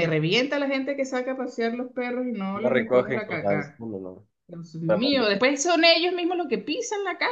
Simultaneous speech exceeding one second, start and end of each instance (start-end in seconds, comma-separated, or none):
2.5-3.8